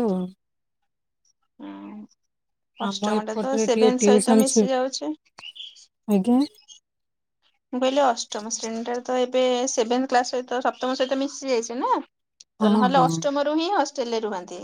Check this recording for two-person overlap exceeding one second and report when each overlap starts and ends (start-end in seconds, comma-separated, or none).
2.9-4.6